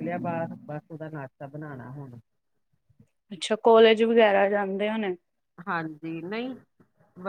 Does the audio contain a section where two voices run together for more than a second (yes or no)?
no